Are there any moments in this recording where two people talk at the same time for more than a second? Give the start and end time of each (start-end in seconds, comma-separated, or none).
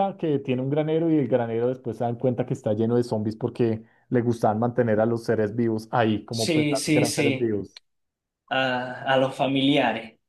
6.3-7.5